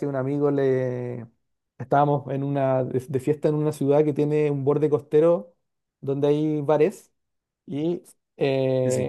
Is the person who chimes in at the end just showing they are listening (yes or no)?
yes